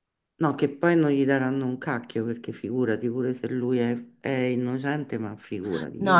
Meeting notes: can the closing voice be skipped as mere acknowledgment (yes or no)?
no